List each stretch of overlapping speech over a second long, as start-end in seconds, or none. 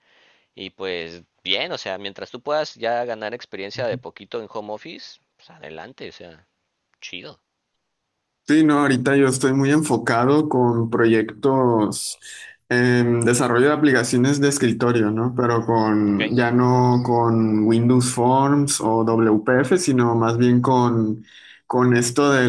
none